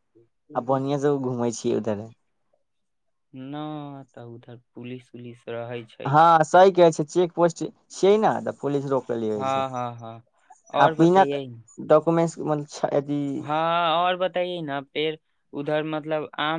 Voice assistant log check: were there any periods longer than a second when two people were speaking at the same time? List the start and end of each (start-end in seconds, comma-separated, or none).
none